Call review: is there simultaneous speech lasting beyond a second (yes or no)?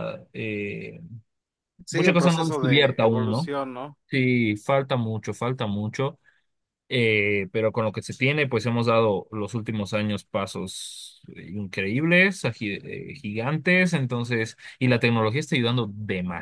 yes